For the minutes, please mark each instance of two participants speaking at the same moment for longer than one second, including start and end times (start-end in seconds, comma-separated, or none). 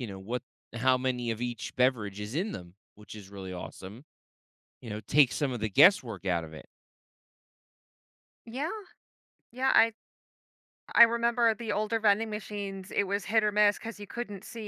none